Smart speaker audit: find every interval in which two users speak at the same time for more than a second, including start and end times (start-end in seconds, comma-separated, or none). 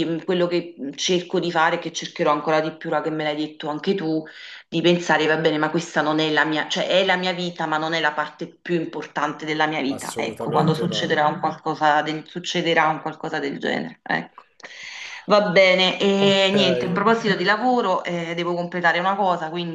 9.9-11.2